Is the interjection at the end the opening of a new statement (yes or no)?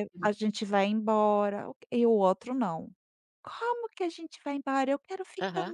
yes